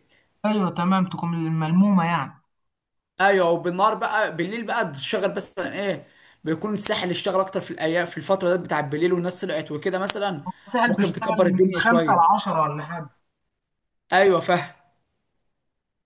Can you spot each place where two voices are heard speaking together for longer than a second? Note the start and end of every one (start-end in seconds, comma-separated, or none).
10.9-12.4